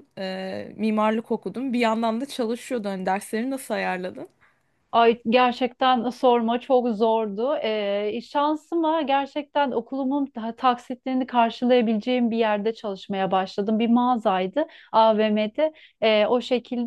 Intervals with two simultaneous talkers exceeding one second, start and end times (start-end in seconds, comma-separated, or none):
none